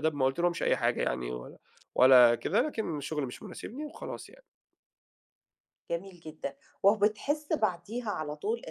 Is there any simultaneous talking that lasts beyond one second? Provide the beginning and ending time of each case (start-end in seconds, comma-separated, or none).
none